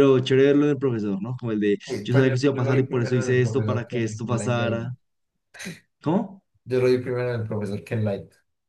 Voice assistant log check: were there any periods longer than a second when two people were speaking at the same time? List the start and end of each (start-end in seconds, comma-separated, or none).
1.9-4.8